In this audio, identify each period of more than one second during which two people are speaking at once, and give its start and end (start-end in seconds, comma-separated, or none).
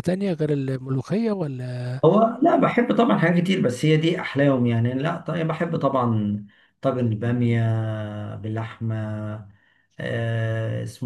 none